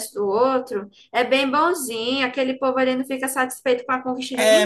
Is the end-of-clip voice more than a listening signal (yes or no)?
yes